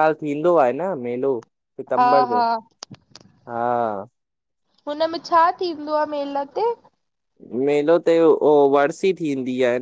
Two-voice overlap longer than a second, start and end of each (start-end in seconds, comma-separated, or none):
none